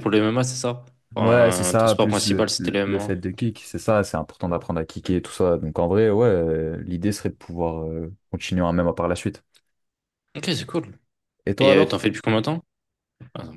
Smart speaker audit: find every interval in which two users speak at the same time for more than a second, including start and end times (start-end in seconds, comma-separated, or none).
1.2-3.5